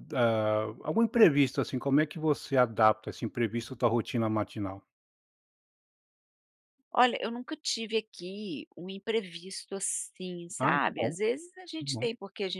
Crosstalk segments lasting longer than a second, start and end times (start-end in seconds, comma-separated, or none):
none